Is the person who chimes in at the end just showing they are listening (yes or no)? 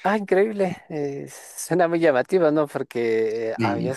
yes